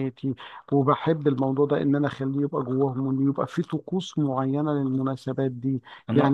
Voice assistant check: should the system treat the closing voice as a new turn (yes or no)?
yes